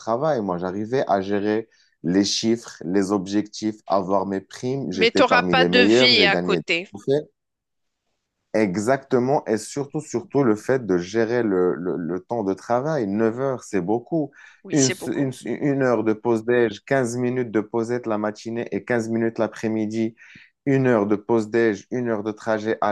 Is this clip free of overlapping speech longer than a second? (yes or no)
no